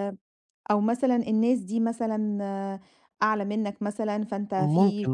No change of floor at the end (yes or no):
yes